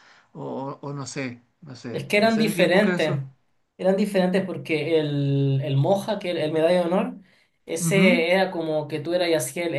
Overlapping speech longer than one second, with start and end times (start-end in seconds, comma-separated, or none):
1.9-3.2